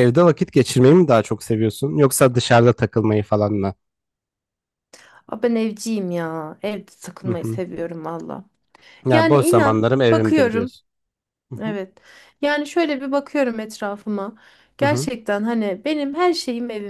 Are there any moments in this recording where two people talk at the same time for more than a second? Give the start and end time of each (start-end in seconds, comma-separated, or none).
9.1-10.7